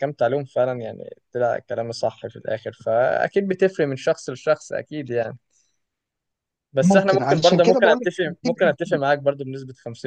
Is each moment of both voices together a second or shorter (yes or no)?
no